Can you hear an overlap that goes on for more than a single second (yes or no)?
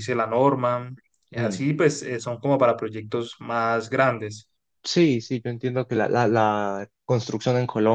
no